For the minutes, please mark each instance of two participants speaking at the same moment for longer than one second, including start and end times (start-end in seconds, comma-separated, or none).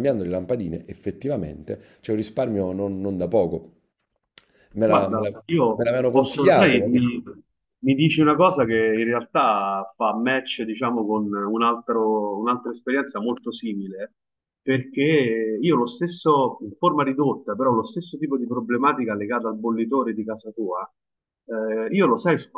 4.8-7.0